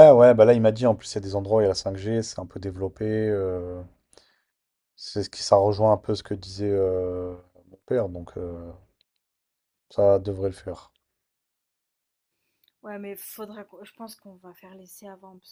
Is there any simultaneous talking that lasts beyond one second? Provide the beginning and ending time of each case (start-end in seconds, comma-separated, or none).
none